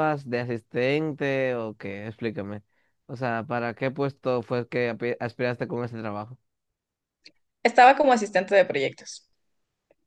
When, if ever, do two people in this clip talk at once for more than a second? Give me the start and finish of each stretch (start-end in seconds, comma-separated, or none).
none